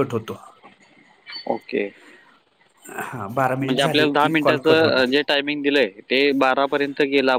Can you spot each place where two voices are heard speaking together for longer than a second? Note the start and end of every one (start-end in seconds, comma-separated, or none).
3.6-5.1